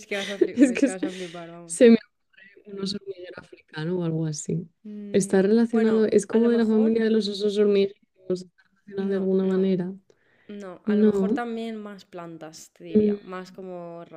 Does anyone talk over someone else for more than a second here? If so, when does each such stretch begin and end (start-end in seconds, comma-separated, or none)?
5.1-6.9